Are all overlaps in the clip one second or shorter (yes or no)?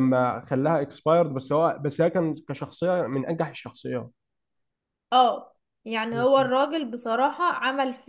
yes